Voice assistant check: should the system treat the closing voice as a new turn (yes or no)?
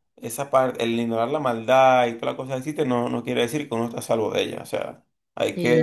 yes